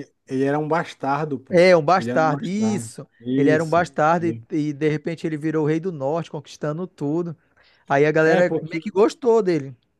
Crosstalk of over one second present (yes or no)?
yes